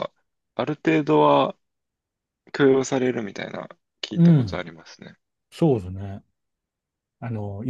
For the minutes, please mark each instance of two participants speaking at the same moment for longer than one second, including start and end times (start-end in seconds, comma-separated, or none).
none